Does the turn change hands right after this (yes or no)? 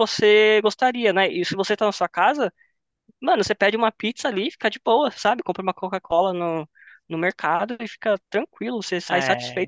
yes